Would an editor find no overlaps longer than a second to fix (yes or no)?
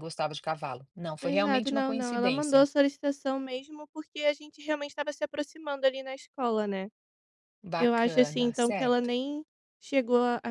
no